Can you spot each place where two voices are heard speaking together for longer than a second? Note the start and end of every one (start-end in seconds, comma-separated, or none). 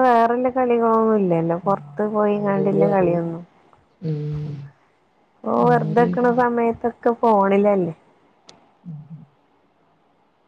1.7-3.3